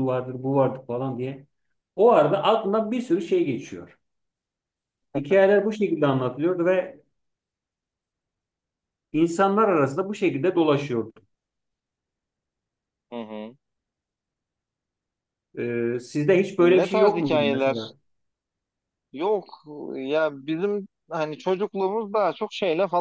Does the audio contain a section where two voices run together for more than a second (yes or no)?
yes